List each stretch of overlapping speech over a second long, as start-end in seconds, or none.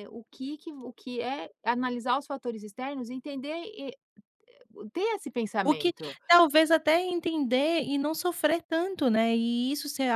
none